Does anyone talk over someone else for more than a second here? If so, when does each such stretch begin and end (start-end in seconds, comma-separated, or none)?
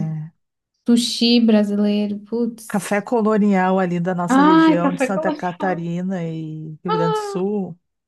4.3-5.7